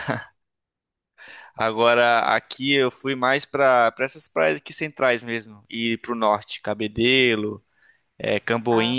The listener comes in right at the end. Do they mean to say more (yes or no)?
no